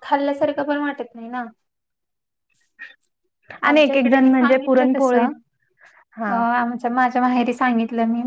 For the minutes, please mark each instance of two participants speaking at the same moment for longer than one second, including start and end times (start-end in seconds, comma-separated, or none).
3.7-5.2